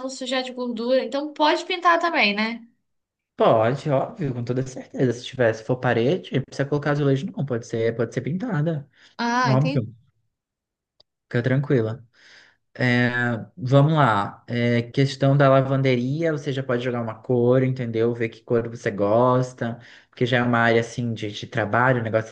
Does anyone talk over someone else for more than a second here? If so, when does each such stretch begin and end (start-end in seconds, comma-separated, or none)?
none